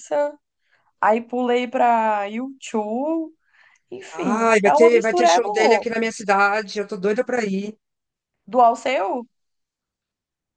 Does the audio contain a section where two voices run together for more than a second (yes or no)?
yes